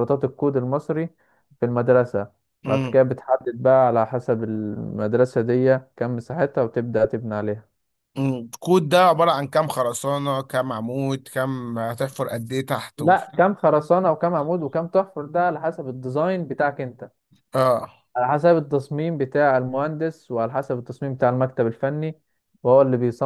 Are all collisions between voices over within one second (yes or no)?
yes